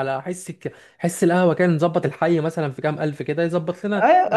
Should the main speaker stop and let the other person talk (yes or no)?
yes